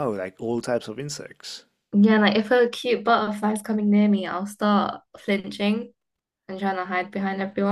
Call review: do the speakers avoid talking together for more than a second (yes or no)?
yes